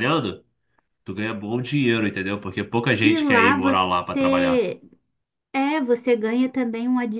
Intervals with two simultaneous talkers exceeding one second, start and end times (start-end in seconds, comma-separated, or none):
3.0-4.7